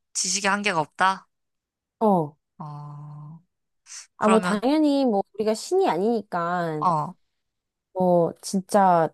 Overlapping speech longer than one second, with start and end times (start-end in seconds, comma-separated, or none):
none